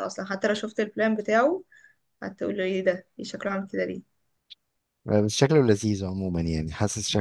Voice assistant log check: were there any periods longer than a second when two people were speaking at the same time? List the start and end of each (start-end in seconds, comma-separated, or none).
none